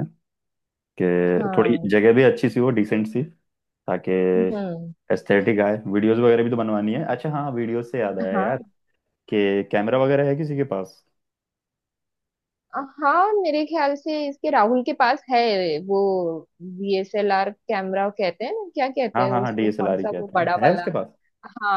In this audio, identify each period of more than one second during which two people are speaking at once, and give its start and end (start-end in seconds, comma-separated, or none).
19.2-20.9